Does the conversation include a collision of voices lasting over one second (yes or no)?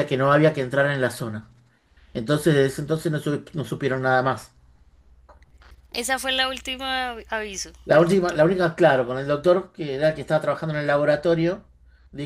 no